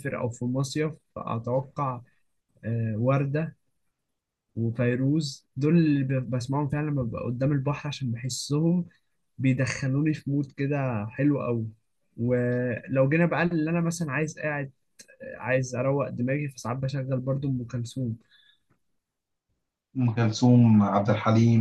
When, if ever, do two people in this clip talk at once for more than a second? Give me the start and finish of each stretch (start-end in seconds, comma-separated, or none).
none